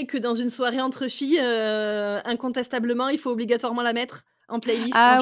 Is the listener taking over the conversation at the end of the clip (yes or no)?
yes